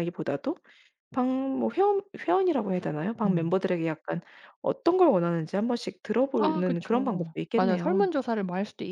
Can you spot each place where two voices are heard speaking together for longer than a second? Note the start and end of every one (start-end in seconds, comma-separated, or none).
6.4-8.1